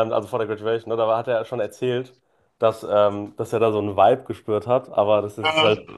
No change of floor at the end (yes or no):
yes